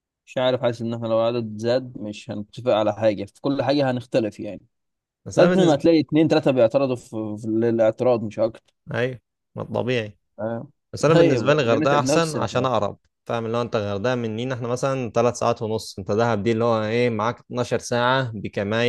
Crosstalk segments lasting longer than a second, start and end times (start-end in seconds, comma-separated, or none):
11.1-12.7